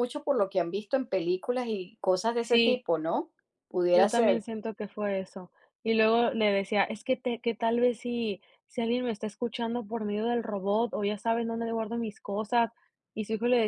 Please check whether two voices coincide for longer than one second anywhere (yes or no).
no